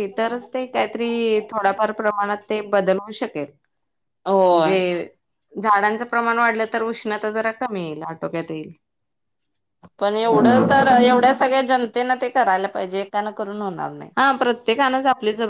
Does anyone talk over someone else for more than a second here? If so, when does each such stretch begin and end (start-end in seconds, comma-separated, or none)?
none